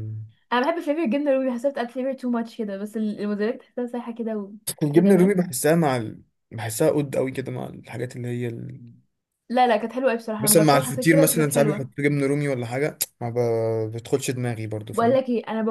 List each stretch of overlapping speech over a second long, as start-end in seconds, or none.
10.4-11.9